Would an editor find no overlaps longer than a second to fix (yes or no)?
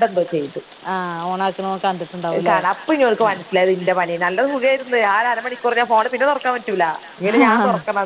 yes